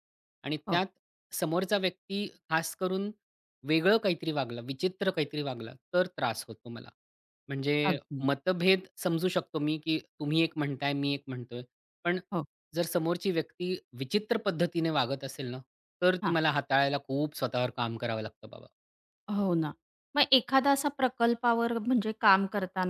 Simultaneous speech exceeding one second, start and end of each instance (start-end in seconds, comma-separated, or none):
none